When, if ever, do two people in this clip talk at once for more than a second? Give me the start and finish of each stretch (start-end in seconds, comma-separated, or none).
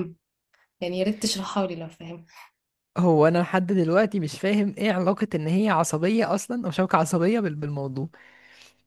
none